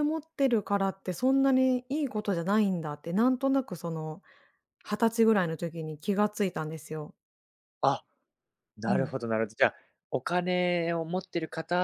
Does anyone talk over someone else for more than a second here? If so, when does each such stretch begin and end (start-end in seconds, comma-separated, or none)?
none